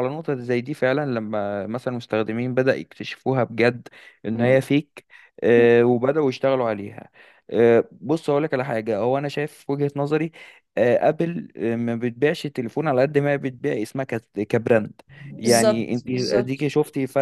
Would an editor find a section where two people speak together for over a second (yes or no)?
yes